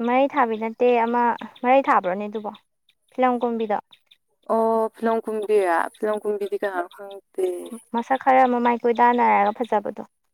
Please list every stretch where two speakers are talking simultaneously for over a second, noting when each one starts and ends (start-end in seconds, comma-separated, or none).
none